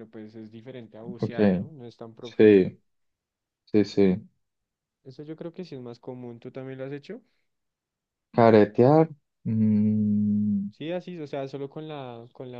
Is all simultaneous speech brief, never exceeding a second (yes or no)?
yes